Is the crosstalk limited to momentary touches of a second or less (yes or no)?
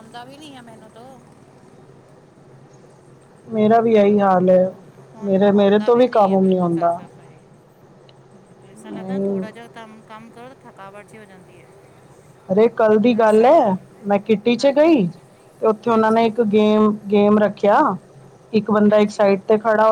no